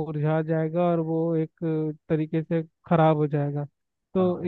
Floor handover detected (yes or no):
no